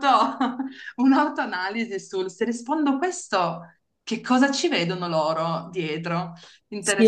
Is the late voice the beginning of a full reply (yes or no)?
yes